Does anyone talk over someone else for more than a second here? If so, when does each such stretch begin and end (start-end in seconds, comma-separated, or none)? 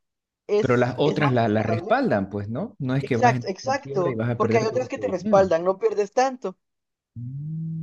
0.6-1.9, 3.0-5.5